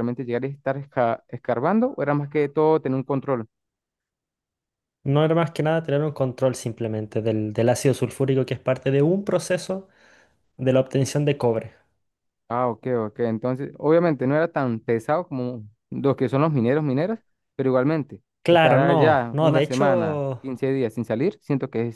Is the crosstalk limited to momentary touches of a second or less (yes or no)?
no